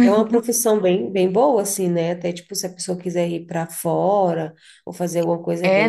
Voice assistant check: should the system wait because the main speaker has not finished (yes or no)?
no